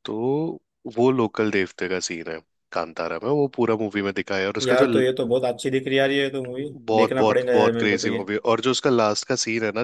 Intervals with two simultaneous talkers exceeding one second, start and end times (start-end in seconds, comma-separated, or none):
6.6-8.2